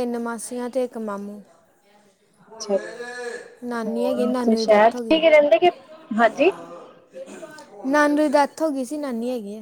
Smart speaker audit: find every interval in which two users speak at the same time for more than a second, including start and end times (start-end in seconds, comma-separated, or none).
3.9-5.2